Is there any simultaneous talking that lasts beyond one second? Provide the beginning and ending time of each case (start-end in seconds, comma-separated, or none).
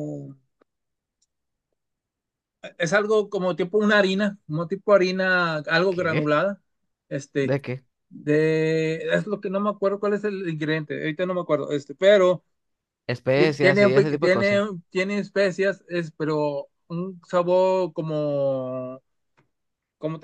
13.3-14.6